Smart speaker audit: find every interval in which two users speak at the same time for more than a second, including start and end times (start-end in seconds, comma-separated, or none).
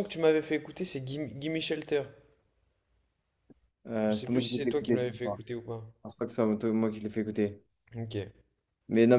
4.1-5.4